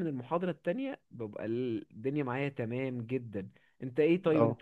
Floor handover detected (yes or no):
no